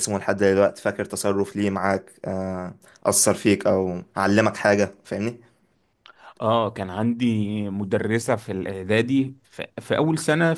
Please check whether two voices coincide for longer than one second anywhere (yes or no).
no